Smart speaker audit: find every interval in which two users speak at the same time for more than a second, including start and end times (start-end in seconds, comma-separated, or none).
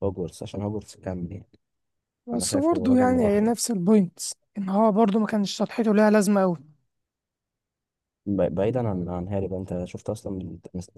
2.3-3.5